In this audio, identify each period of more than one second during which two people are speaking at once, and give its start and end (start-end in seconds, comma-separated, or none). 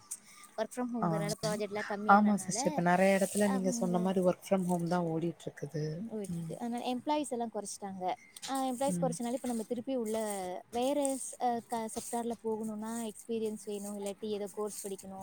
none